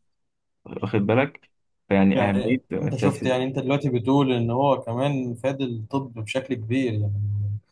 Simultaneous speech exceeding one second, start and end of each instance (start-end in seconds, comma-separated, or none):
2.1-3.5